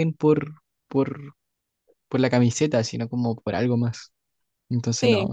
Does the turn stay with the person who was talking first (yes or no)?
no